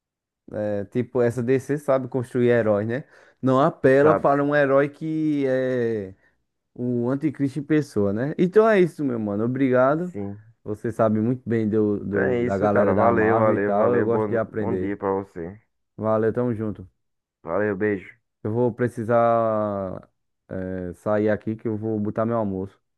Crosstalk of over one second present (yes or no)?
yes